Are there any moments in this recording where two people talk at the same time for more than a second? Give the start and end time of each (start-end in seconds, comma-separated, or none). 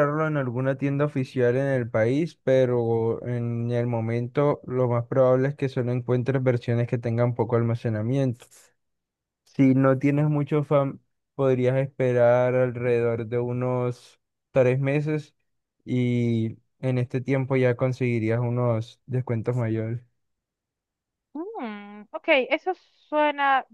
none